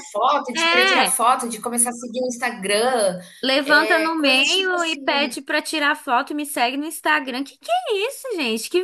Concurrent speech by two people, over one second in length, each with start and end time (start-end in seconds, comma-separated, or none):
3.6-5.0